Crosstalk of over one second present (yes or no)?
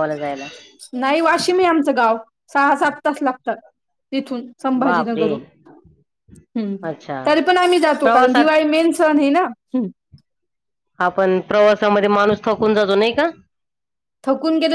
no